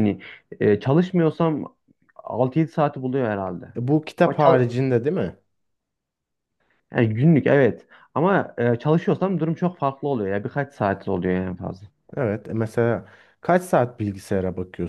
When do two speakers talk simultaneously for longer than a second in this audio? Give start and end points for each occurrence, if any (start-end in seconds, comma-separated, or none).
none